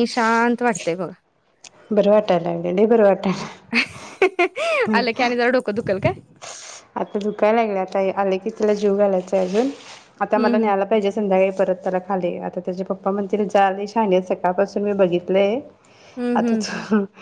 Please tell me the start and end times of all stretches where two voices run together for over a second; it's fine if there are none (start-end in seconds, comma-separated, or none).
none